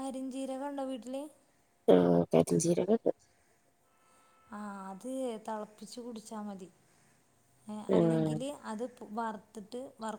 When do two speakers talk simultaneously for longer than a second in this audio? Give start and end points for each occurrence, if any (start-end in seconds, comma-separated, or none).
none